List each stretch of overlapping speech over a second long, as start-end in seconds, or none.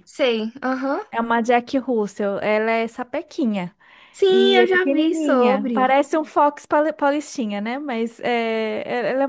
4.3-6.0